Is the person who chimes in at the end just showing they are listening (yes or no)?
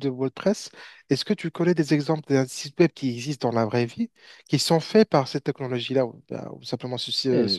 no